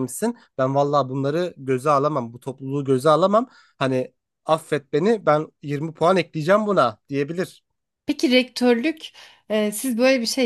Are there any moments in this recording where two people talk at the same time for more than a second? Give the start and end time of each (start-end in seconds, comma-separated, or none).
none